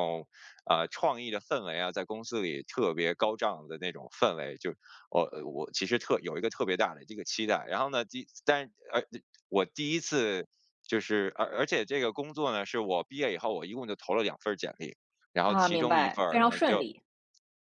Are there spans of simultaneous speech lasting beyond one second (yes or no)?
yes